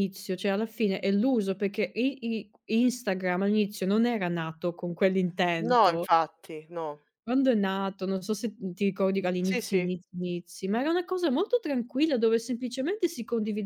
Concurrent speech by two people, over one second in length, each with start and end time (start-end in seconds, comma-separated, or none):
none